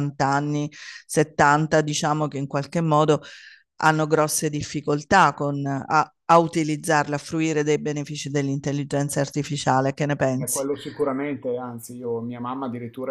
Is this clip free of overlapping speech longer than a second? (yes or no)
yes